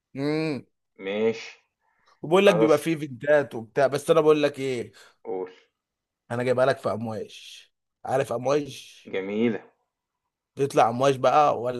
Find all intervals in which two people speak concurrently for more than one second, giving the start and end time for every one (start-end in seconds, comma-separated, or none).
none